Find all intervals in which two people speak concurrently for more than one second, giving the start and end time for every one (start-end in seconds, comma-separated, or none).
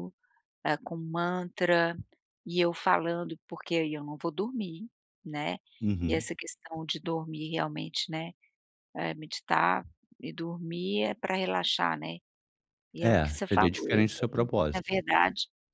13.0-14.9